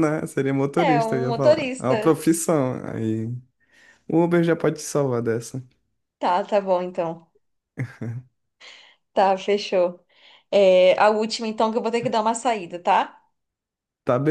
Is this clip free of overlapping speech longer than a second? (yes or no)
no